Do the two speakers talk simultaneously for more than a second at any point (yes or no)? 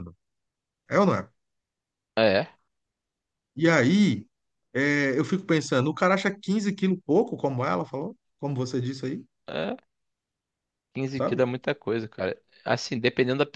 no